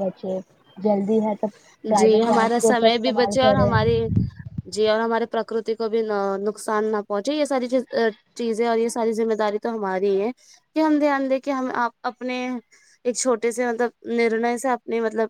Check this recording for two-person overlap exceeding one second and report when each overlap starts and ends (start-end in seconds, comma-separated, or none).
2.0-3.7